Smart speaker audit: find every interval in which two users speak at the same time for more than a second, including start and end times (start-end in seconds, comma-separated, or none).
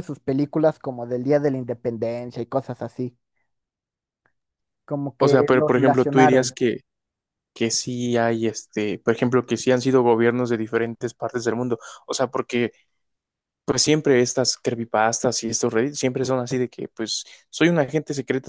5.2-6.6